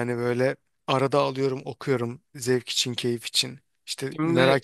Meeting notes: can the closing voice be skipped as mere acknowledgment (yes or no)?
yes